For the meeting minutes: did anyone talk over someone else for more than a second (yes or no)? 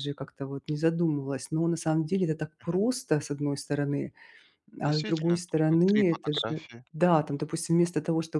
yes